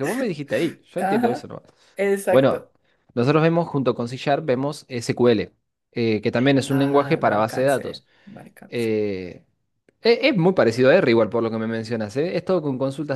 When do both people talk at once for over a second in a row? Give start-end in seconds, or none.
6.7-8.1